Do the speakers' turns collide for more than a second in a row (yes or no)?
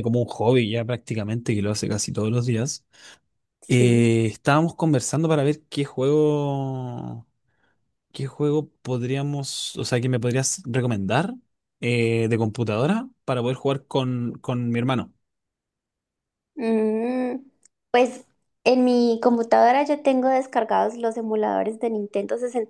no